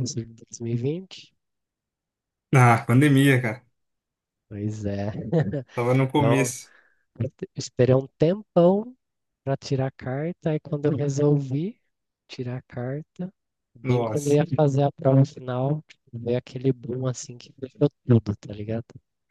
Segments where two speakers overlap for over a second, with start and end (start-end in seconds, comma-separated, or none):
none